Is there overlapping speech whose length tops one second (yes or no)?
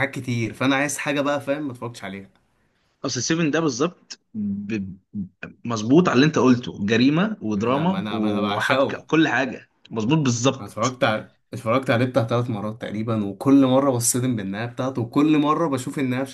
yes